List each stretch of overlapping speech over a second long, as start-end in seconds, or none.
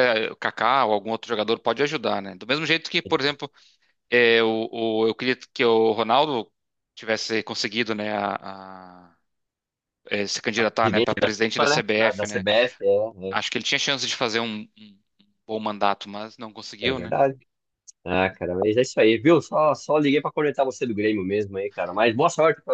10.8-12.4